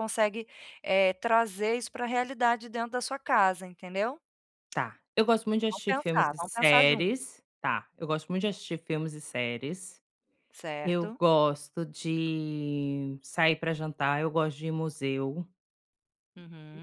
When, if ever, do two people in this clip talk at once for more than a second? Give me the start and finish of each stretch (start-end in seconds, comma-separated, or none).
5.7-7.1